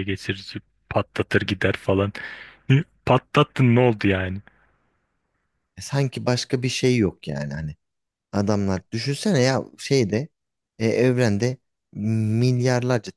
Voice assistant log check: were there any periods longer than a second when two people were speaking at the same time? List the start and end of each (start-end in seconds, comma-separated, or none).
none